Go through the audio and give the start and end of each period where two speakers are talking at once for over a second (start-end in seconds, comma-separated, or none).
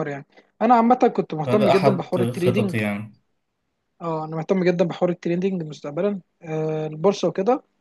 1.5-2.7